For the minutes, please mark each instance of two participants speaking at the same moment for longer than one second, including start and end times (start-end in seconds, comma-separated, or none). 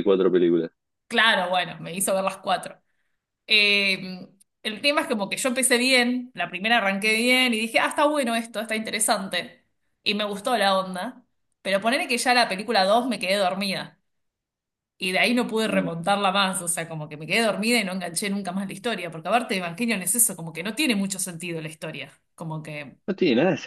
none